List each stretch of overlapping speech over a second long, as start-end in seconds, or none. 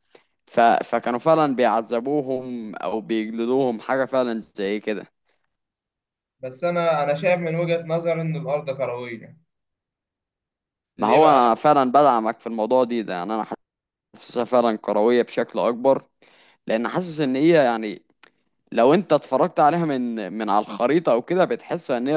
none